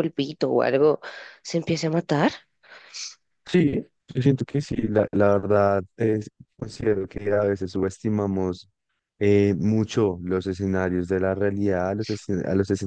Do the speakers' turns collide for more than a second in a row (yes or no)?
no